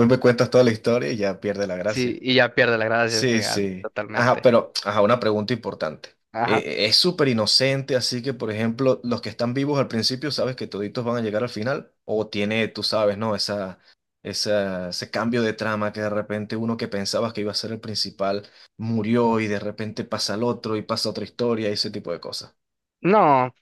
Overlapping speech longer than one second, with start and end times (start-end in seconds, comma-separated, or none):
3.1-4.5